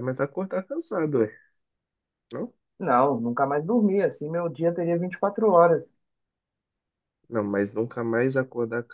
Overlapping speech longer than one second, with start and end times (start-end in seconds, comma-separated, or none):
none